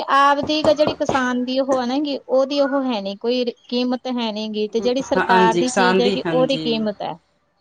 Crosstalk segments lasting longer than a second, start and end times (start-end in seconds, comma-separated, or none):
4.8-6.8